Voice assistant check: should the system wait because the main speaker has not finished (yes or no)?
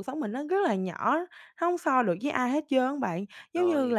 yes